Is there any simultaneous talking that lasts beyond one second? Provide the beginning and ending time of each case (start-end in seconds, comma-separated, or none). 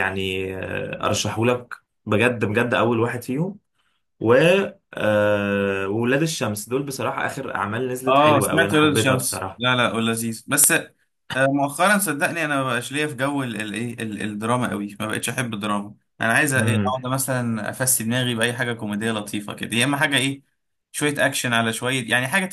8.0-9.6